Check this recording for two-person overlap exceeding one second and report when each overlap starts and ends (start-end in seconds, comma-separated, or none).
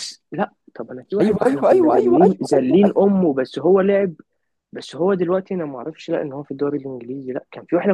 1.2-2.9